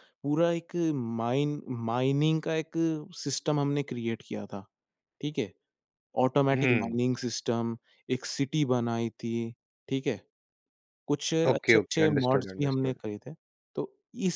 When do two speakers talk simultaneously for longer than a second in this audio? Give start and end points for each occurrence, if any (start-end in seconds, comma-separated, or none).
11.5-13.0